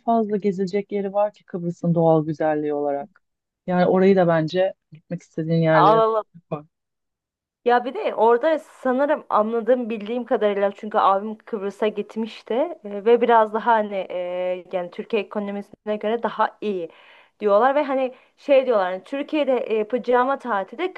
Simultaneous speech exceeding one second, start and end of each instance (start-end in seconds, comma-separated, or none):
none